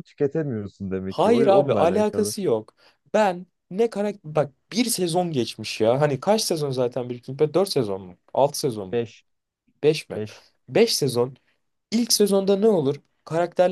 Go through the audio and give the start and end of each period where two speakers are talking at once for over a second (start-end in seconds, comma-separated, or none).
1.1-2.3